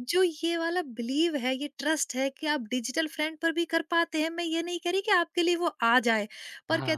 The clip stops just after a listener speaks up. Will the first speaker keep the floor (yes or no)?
yes